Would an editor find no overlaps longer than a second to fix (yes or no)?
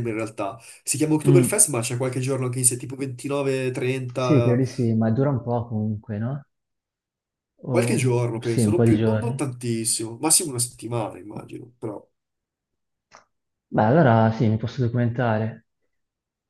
no